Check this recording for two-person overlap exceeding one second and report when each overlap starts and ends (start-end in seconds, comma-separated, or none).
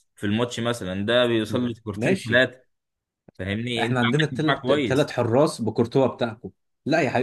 3.8-5.1